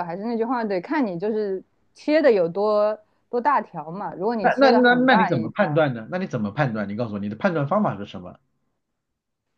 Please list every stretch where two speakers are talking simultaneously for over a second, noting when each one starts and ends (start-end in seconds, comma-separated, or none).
4.4-5.8